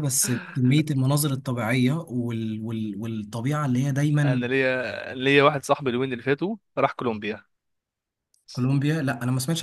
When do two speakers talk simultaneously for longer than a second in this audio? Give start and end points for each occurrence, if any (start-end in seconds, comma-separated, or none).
none